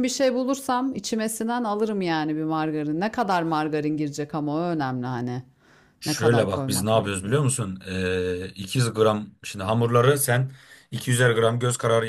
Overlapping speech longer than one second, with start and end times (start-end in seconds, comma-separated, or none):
6.0-7.5